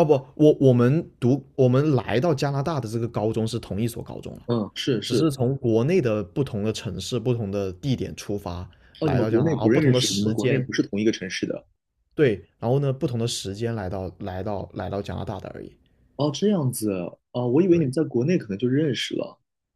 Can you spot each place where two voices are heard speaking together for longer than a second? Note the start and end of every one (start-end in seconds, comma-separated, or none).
9.0-10.7